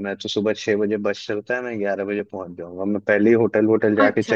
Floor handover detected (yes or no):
yes